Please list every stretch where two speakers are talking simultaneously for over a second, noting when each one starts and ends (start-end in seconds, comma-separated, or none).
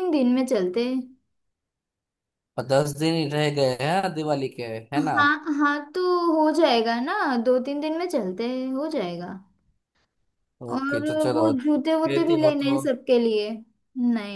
10.8-12.8